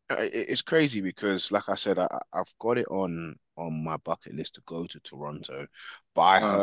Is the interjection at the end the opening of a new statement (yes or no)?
no